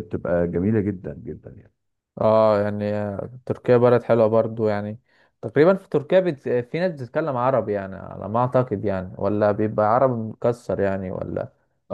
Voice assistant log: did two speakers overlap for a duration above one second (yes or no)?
no